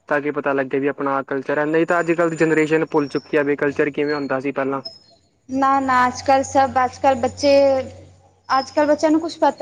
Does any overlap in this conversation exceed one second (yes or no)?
no